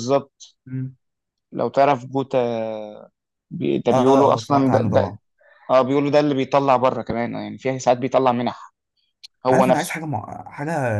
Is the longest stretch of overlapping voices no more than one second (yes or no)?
no